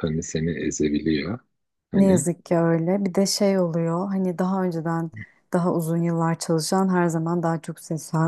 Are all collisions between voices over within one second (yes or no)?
yes